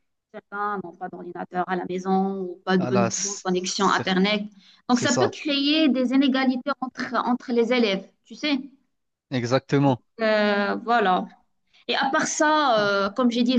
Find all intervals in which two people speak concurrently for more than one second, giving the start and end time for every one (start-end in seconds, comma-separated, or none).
2.8-4.1